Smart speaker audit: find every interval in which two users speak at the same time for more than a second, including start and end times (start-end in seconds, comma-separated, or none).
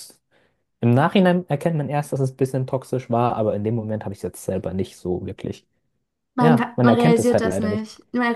6.4-7.9